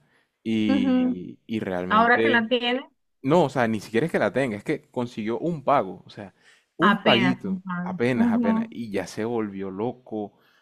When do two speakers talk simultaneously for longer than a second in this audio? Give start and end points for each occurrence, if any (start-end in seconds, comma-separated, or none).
6.8-8.7